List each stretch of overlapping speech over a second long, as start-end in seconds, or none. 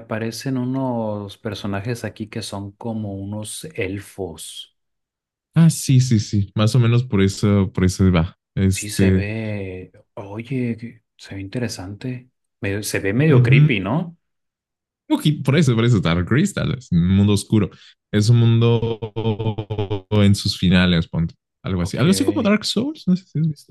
none